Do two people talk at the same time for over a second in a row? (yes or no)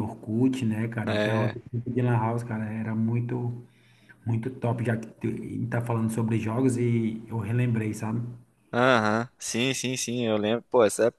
no